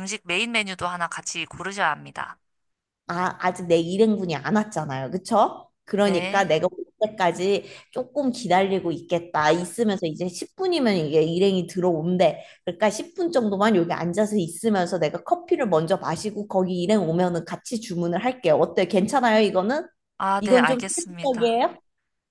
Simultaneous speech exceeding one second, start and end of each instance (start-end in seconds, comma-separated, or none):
20.4-21.6